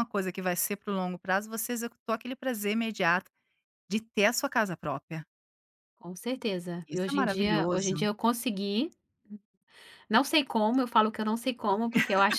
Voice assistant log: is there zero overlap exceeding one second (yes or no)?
no